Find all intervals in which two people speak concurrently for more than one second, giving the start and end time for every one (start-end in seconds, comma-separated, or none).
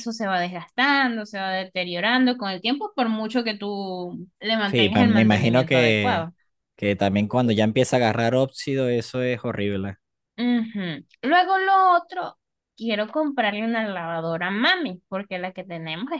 4.7-6.2